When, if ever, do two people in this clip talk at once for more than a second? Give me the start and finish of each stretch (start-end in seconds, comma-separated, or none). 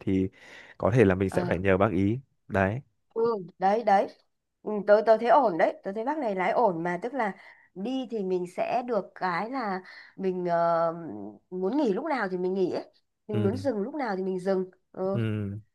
none